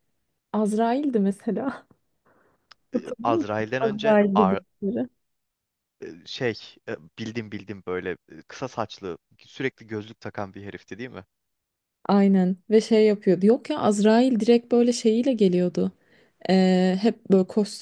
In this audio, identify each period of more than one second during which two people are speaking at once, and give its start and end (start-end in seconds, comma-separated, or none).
2.9-4.6